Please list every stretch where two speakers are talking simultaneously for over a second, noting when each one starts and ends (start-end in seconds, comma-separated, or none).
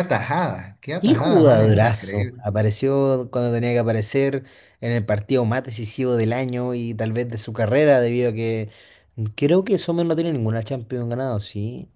1.0-2.4